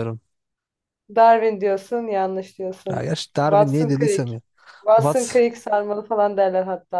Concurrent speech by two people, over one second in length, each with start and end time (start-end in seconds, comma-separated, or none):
2.9-4.3